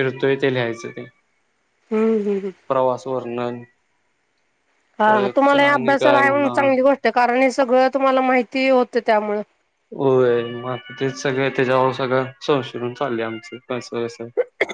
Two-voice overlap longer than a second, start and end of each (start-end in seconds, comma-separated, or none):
none